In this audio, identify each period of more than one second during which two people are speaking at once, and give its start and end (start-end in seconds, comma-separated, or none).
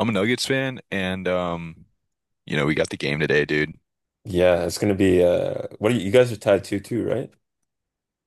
none